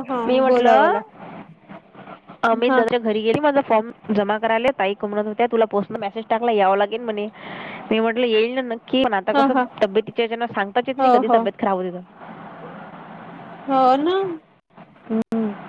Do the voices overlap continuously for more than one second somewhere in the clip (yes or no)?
no